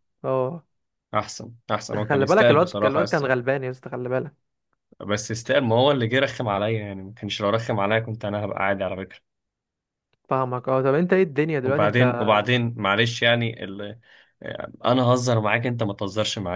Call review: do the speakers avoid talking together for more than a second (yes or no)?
no